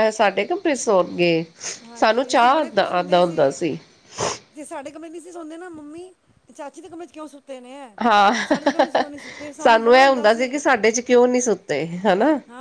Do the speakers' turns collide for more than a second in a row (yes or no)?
yes